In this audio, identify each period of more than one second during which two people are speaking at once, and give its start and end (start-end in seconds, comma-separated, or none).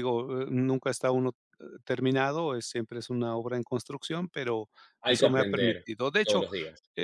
5.1-6.4